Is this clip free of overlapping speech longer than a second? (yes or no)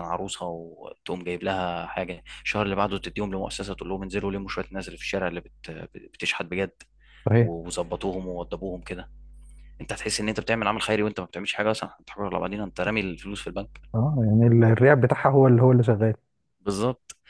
yes